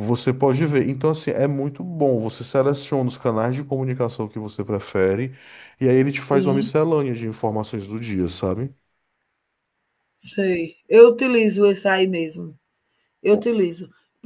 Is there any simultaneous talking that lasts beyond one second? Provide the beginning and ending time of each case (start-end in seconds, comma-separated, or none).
none